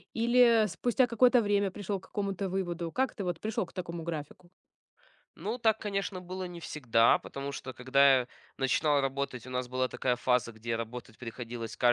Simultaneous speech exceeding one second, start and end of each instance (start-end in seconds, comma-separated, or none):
none